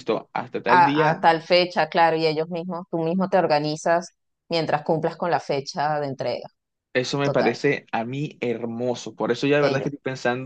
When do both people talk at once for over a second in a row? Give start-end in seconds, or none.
none